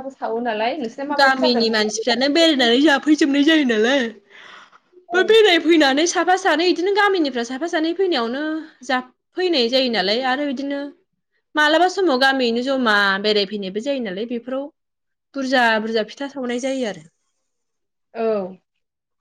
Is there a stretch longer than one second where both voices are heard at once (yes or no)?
yes